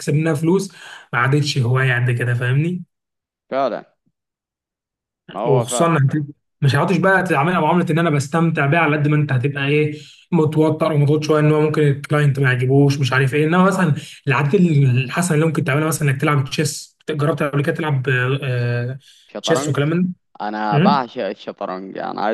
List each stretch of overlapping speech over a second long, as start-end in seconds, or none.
none